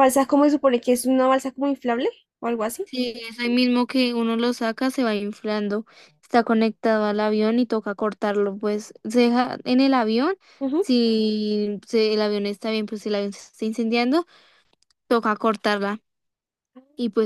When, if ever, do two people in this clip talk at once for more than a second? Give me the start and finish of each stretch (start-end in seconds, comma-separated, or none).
none